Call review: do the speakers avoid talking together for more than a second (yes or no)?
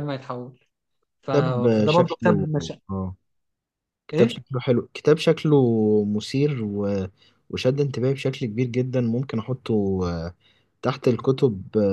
no